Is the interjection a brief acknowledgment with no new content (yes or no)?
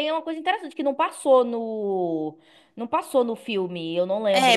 no